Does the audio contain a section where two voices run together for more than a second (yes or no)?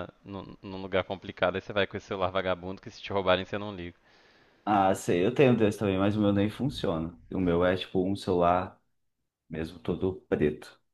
no